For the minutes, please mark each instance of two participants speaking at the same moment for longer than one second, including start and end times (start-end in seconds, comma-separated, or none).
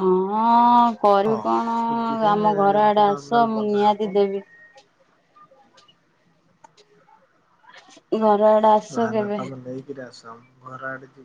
2.8-4.1